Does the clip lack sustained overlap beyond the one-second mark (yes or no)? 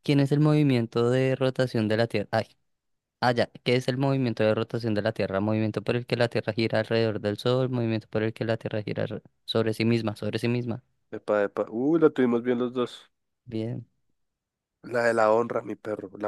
yes